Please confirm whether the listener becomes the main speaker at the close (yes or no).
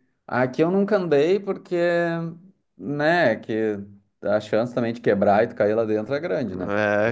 yes